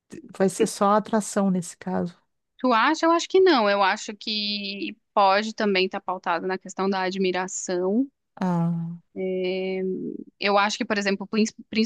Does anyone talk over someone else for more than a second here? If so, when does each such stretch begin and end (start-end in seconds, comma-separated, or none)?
none